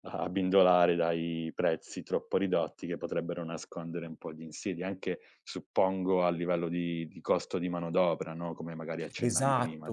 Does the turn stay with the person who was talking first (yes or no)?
no